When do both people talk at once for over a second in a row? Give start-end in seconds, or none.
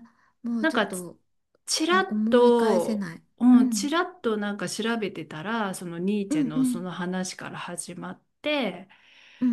1.9-3.9